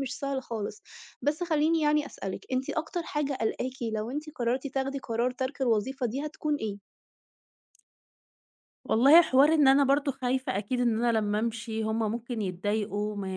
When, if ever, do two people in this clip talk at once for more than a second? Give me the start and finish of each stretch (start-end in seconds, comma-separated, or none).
none